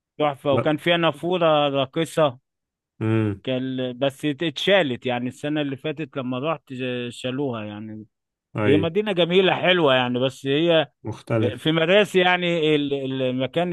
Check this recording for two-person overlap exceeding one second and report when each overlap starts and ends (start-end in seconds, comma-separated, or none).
none